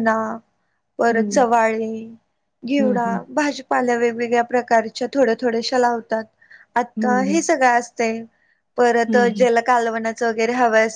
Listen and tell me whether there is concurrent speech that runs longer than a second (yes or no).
no